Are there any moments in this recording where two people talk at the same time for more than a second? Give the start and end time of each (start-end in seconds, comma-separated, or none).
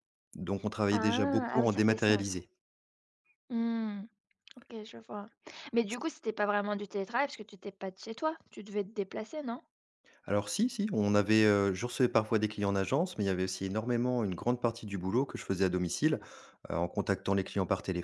0.9-2.4